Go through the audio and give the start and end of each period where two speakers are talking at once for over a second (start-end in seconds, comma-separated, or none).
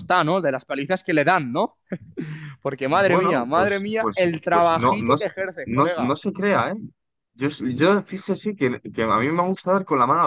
2.9-6.2